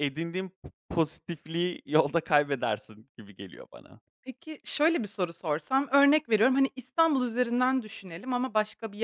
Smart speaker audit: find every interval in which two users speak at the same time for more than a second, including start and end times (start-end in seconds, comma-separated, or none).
none